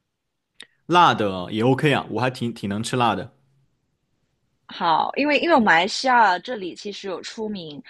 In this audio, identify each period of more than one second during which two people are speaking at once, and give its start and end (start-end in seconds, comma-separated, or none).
none